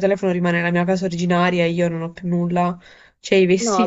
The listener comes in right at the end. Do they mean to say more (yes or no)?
yes